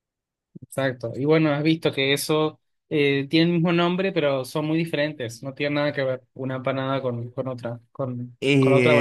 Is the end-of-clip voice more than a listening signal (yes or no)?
yes